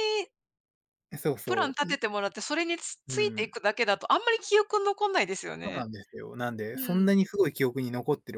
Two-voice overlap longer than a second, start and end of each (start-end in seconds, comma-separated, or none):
none